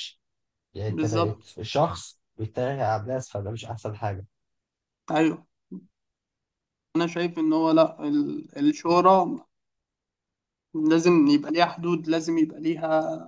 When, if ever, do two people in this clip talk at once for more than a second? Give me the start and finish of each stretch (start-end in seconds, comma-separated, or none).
none